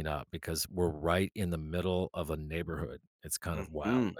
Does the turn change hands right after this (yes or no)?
yes